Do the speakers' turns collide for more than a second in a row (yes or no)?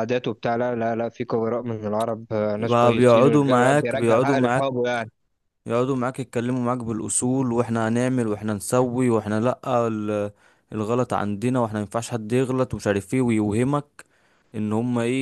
yes